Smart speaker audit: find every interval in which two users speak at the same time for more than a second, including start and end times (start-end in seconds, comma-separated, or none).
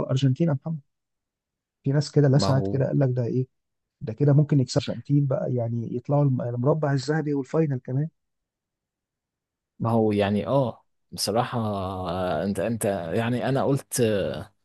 none